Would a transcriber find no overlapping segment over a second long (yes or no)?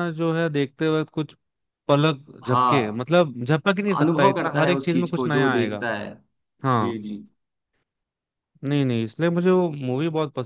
no